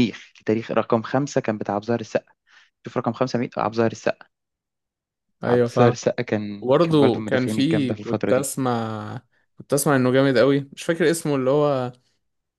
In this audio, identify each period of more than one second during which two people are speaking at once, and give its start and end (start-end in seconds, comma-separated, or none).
6.6-8.5